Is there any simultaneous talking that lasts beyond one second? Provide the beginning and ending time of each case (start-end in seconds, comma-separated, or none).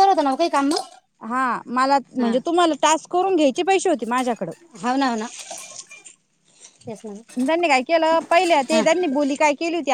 none